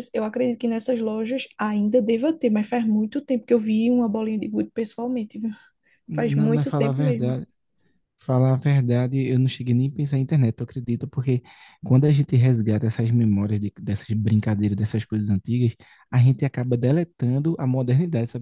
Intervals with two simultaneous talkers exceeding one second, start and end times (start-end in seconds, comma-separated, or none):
6.1-7.4